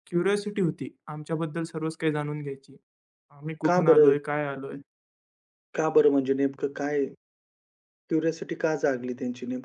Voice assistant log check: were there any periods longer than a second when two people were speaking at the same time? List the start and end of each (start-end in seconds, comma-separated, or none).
none